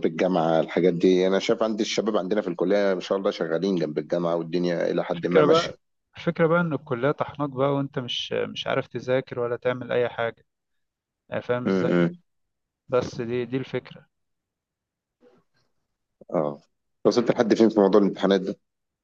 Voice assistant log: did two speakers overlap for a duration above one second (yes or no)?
no